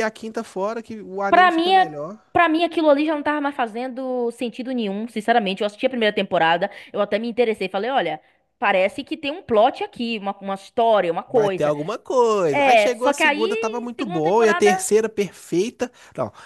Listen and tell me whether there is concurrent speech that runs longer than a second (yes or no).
yes